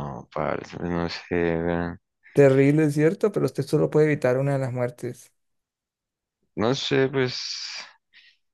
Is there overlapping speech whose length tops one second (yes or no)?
no